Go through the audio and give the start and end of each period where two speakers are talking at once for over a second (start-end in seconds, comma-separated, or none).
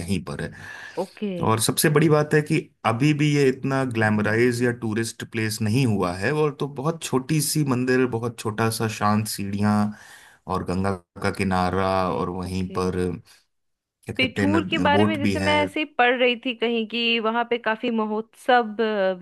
14.2-15.5